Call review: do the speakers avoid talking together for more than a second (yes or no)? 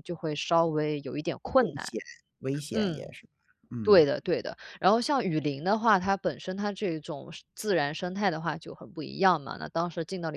yes